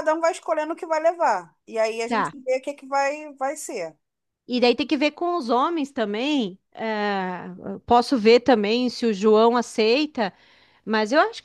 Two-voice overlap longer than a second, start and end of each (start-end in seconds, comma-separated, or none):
none